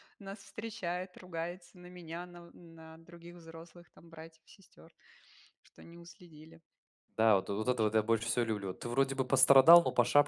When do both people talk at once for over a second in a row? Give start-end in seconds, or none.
none